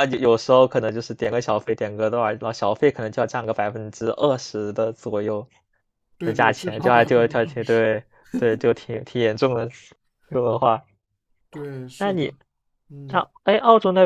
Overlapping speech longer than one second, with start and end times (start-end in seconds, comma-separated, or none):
6.2-7.8